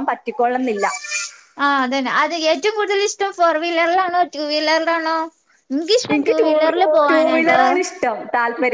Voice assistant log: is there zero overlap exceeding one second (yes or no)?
no